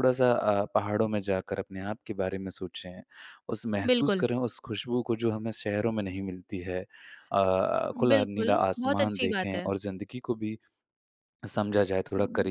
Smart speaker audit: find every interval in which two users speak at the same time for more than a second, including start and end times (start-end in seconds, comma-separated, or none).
8.1-9.7